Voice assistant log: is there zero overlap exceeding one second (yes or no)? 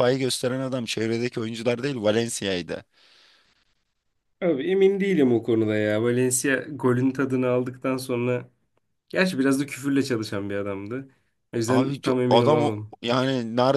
no